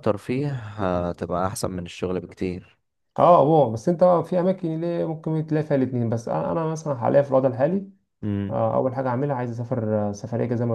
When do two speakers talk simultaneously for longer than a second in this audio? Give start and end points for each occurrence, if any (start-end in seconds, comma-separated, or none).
none